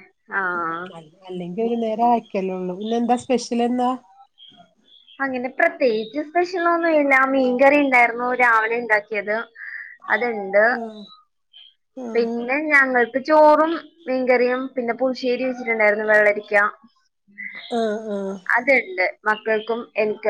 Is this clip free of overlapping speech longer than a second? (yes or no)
yes